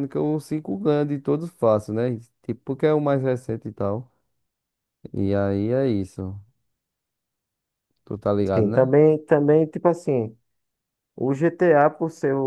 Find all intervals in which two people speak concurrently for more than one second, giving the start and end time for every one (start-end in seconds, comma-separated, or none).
none